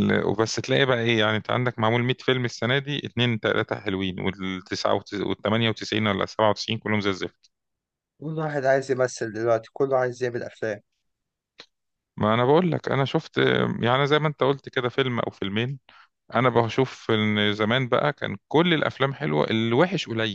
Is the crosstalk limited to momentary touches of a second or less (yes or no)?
yes